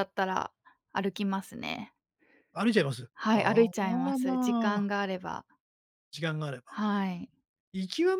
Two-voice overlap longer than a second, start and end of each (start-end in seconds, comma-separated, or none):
3.1-4.9